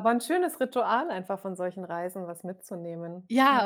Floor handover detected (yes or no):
yes